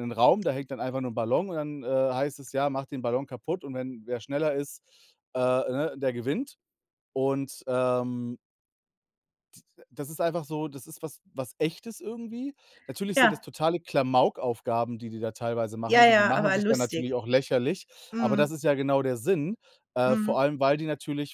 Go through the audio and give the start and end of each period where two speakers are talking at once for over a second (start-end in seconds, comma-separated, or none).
15.9-17.2